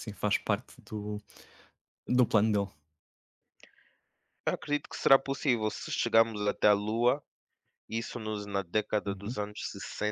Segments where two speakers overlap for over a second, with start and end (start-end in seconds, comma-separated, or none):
none